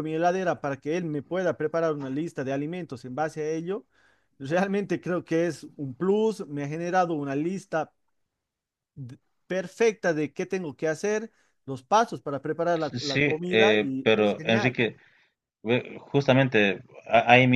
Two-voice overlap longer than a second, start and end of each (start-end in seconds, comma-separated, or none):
12.8-14.8